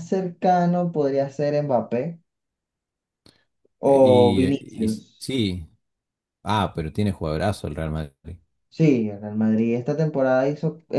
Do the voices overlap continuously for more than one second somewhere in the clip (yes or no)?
yes